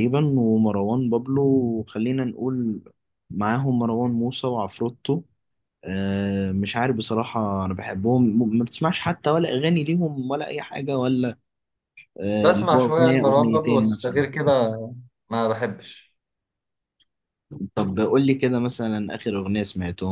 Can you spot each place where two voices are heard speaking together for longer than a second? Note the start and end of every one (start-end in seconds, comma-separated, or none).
12.4-14.2